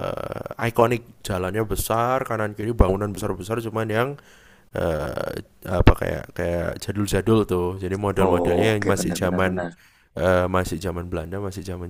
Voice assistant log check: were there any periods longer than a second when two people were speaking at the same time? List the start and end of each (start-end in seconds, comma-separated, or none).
8.2-9.7